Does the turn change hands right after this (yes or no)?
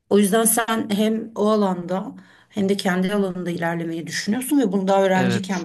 no